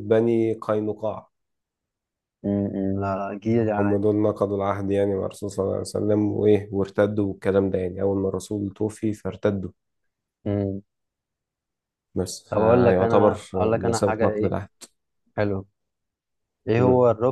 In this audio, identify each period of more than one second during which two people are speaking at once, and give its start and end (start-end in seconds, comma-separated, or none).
12.5-14.6